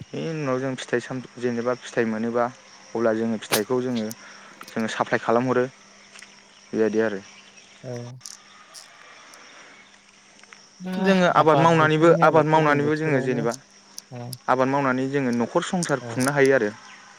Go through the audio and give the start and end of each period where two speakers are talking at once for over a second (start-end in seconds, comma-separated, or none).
11.8-13.4